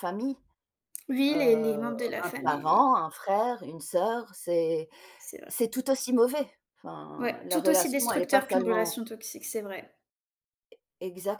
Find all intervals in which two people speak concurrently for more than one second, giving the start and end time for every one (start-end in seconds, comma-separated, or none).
1.3-2.9, 7.2-9.0